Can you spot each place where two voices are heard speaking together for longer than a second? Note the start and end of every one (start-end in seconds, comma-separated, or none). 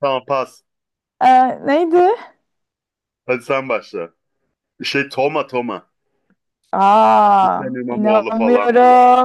7.4-8.7